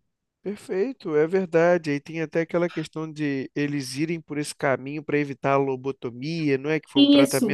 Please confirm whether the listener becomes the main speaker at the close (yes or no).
yes